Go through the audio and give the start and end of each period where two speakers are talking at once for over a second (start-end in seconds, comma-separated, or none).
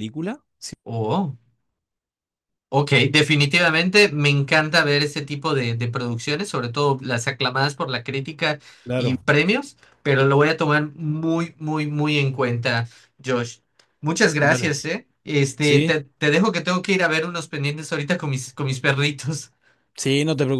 none